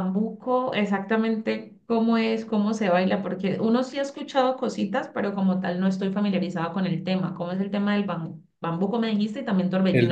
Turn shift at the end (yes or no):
yes